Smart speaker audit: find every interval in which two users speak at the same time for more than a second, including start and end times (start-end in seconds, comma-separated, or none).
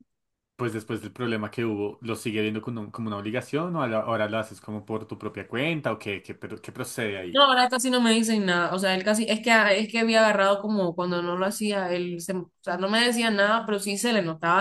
none